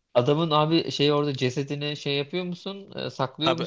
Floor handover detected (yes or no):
yes